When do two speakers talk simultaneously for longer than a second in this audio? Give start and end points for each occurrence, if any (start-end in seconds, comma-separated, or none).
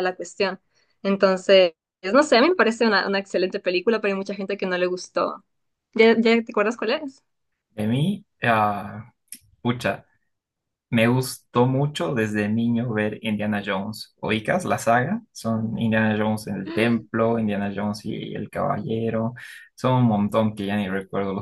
none